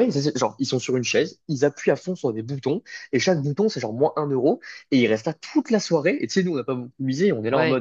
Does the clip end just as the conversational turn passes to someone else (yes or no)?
no